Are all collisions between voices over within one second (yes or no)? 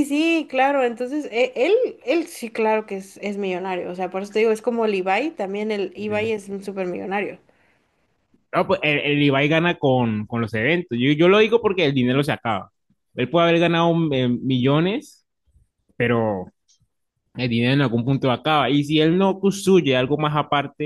yes